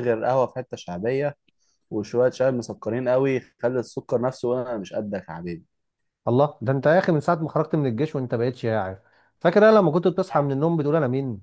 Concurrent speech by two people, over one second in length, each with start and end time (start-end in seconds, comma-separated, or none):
none